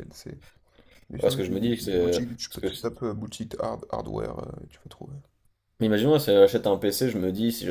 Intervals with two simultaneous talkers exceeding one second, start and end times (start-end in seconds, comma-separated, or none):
1.2-2.9